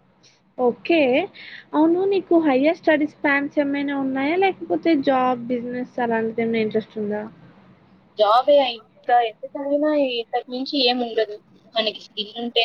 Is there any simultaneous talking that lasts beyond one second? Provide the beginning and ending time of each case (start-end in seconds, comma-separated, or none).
none